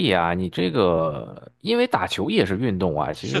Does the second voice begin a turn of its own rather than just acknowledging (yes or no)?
yes